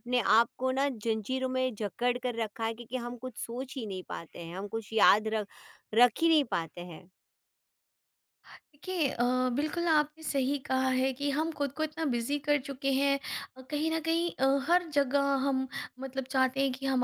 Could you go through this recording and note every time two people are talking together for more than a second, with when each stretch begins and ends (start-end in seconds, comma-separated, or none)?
none